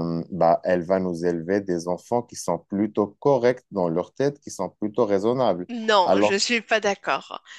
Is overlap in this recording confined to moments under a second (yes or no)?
yes